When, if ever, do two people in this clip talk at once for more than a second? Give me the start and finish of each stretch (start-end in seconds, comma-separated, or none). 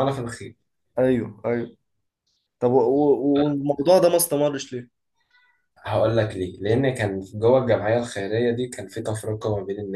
none